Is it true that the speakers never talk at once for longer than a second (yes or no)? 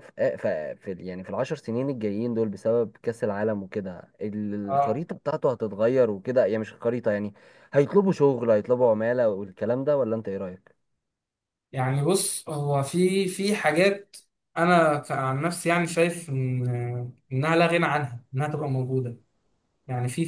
yes